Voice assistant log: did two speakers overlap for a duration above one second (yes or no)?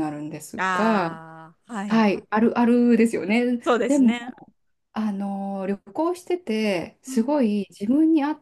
no